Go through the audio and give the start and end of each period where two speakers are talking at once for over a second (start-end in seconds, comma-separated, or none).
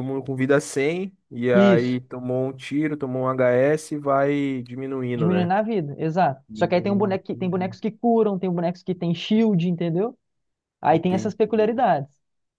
6.5-7.8